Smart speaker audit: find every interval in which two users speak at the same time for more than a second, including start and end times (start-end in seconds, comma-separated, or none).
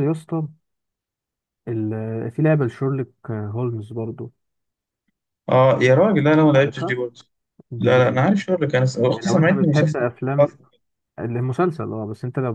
9.1-10.5